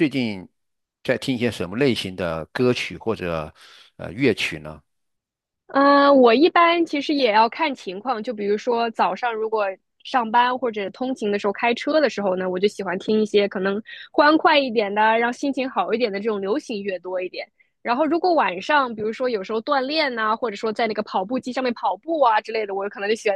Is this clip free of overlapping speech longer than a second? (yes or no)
yes